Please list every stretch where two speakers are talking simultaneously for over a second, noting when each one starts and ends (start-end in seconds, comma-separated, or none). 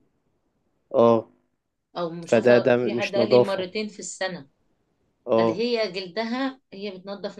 2.3-3.6